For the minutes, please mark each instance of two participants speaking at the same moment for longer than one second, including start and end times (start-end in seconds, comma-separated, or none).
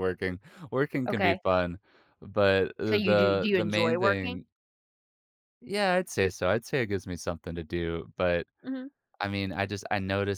2.9-4.4